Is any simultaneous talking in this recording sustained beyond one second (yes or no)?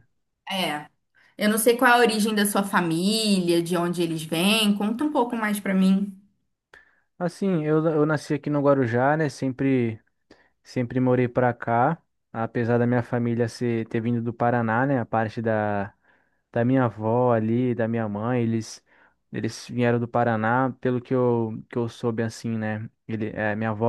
no